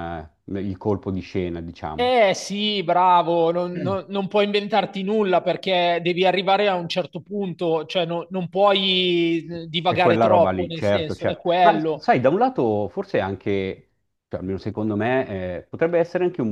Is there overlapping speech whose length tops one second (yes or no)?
yes